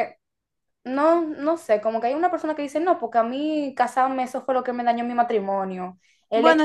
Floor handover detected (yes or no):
no